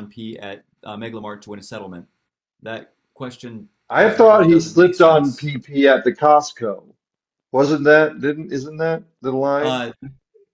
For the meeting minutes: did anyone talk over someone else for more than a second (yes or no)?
yes